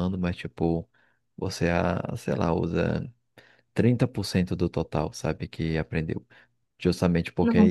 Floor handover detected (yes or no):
no